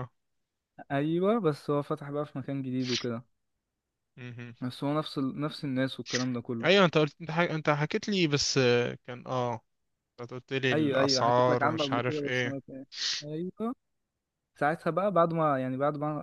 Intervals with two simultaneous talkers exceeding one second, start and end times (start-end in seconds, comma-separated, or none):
10.7-12.6